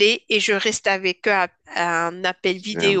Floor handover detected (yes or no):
no